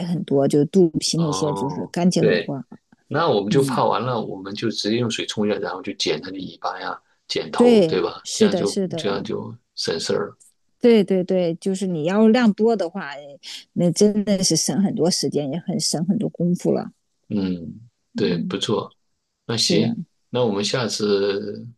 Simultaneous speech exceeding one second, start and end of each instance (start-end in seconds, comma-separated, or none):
1.1-2.5, 7.5-9.2